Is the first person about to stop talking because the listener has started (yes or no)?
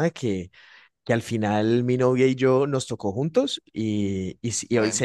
no